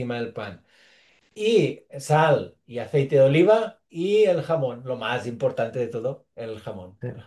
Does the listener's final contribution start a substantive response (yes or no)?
yes